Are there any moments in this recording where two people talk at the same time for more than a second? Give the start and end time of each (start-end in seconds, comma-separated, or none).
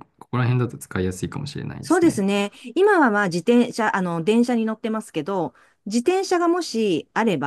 none